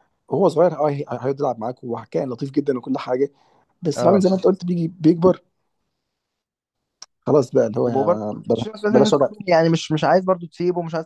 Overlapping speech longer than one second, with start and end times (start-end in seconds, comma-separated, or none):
7.8-9.3